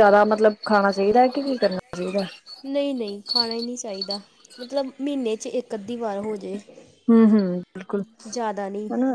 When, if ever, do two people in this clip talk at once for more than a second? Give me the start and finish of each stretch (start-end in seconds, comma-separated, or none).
none